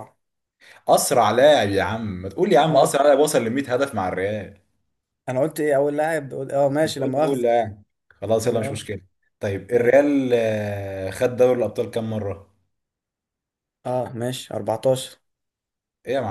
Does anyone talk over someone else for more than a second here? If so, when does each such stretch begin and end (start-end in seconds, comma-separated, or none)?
none